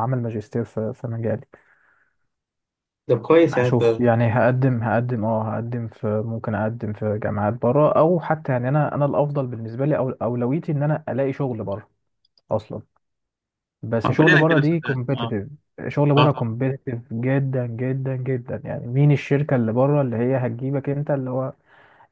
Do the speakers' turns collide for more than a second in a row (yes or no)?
yes